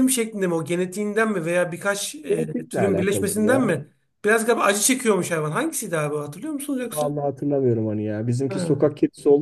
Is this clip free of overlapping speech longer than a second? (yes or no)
no